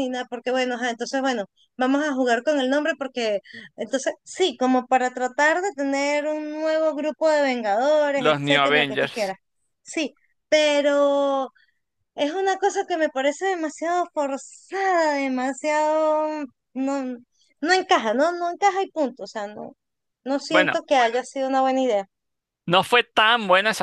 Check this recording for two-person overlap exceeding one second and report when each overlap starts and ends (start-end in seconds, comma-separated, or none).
8.1-9.3